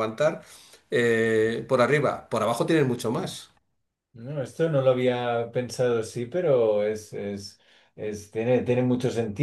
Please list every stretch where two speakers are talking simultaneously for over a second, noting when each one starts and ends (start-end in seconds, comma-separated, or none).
none